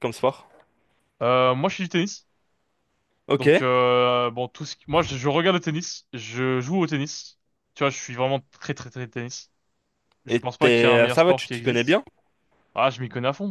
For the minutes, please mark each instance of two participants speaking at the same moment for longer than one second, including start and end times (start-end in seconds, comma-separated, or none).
10.3-12.0